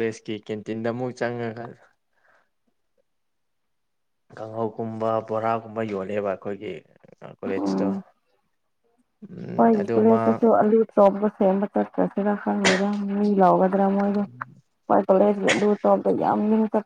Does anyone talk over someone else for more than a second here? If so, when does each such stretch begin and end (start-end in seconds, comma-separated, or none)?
none